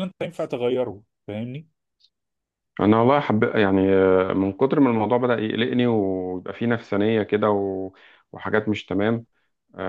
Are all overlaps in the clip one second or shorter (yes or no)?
yes